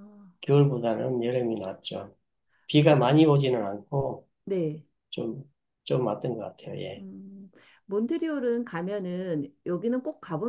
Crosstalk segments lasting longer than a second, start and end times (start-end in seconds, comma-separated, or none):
none